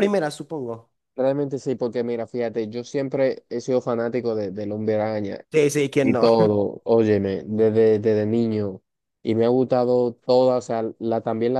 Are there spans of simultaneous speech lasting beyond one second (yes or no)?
no